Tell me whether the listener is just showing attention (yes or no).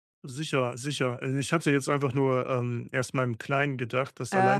yes